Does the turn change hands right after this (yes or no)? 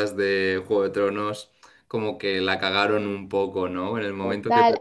yes